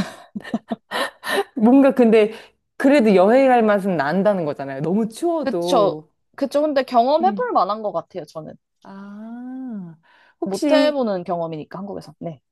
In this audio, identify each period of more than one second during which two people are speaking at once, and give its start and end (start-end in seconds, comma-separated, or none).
none